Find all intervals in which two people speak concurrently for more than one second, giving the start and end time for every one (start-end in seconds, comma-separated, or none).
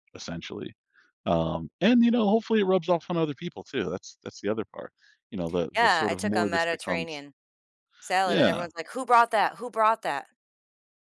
5.8-7.2